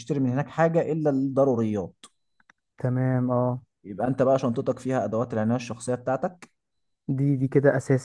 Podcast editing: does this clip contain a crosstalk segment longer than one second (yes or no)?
no